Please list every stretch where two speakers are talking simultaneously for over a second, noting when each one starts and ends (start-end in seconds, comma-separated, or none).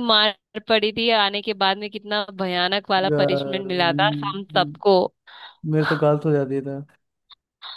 3.1-4.8